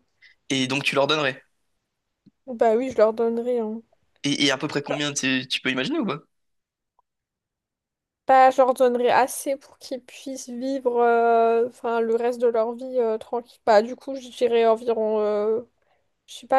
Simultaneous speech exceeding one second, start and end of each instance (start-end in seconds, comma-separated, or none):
none